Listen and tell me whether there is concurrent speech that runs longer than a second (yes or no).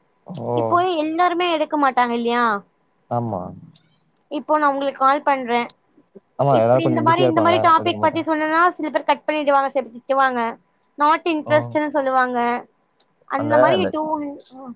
yes